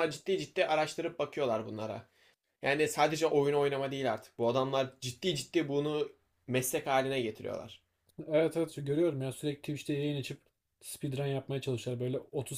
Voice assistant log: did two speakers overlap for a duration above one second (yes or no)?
no